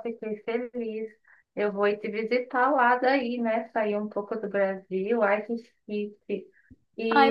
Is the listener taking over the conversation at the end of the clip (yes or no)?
no